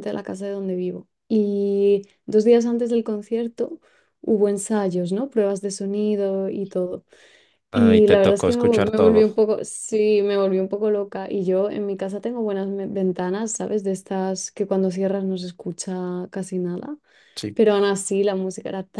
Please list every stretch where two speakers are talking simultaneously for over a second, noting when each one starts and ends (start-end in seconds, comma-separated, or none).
7.7-9.3